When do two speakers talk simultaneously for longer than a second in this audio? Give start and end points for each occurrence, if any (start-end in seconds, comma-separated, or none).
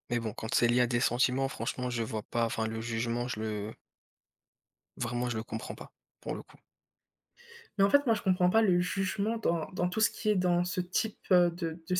none